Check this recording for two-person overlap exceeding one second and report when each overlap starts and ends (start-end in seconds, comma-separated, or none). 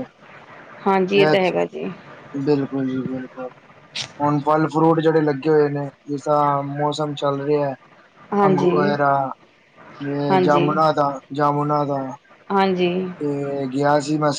none